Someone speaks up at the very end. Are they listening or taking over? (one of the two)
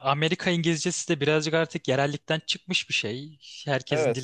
taking over